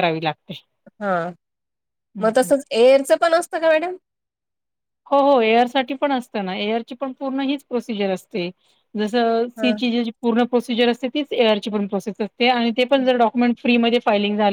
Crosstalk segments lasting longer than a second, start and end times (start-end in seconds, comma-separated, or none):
none